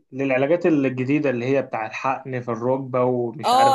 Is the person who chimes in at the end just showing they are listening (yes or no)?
no